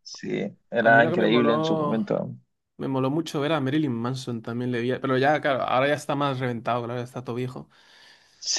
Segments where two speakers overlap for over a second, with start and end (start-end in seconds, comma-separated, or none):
0.8-2.2